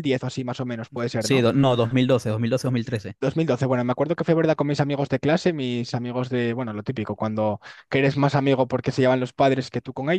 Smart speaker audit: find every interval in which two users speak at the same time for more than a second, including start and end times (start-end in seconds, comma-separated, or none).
none